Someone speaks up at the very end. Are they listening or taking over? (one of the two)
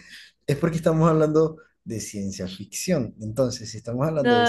taking over